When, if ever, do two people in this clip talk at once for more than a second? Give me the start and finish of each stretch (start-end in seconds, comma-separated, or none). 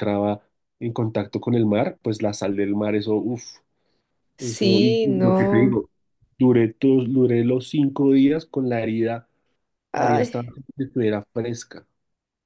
4.5-5.8